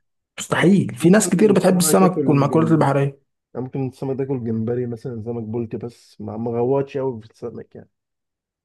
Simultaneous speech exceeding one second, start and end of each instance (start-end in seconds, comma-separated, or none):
0.5-2.9